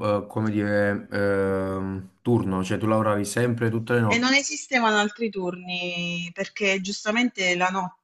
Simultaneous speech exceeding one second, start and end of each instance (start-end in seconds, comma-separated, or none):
none